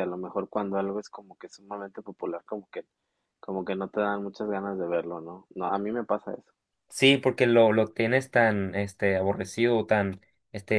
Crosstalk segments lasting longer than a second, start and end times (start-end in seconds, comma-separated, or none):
none